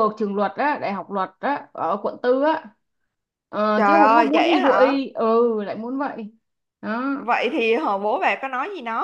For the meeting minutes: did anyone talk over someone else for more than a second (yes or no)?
yes